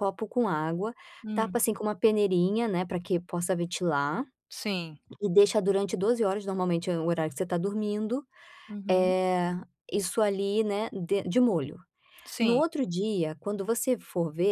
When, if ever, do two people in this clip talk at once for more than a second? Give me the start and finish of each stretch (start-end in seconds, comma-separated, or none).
none